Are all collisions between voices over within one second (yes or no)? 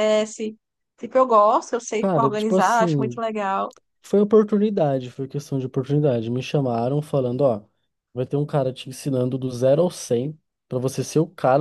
no